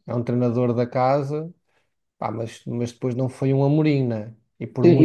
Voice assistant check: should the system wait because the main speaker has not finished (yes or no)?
no